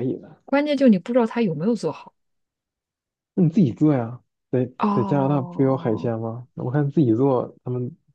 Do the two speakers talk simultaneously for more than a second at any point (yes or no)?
yes